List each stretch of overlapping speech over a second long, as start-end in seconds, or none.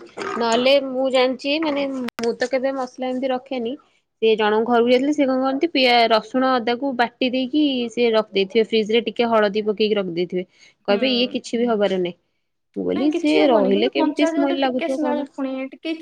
12.9-15.3